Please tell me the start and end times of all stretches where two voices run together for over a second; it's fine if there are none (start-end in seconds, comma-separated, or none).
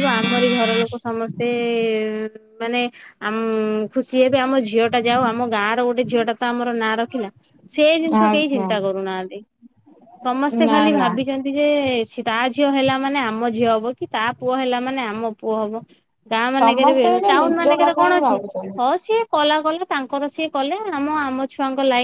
16.6-18.4